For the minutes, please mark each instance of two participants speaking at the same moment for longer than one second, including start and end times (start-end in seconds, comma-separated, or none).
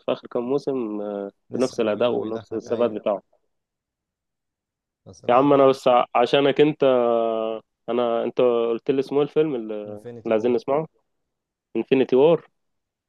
1.5-2.9